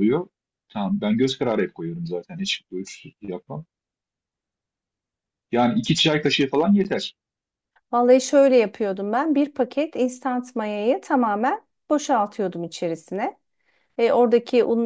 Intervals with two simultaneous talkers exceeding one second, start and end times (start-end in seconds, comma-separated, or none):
none